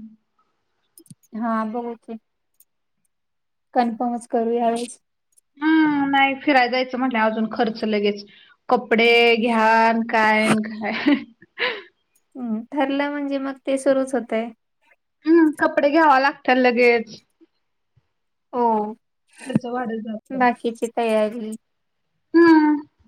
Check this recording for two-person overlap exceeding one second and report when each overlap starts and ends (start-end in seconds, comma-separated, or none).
none